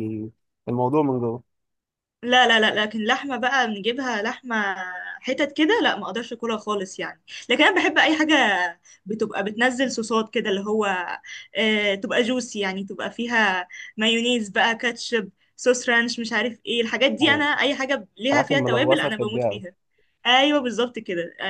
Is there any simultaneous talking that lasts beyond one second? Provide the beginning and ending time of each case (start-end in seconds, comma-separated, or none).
18.3-19.6